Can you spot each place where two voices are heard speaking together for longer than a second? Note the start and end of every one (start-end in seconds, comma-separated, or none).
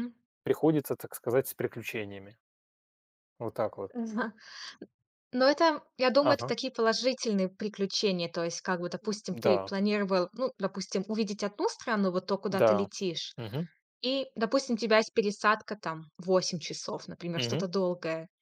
none